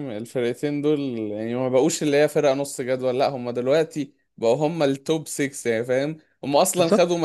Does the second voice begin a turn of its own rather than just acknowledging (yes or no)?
no